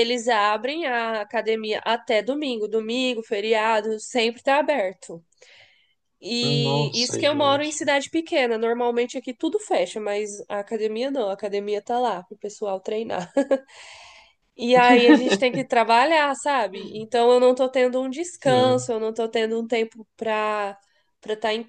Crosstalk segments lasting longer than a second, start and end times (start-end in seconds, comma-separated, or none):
6.4-7.8